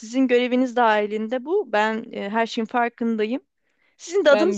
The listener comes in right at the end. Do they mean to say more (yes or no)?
no